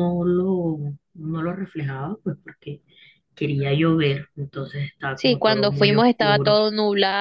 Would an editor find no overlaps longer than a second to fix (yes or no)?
no